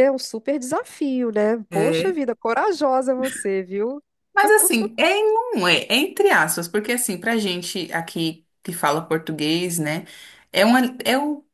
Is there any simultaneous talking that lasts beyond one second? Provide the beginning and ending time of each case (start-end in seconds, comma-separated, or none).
none